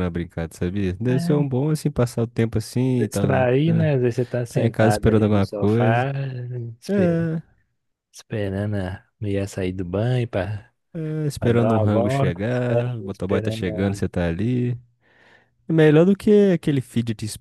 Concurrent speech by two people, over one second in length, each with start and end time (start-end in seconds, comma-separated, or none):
4.5-6.1, 11.4-14.0